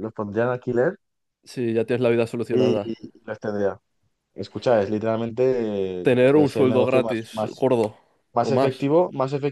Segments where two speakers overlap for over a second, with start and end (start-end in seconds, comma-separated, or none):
6.1-7.7